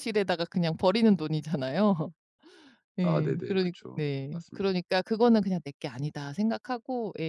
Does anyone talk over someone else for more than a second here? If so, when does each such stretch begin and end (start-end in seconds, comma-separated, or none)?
3.0-4.7